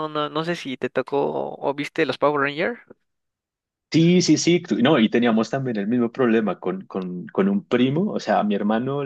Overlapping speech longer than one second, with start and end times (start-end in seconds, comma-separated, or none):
none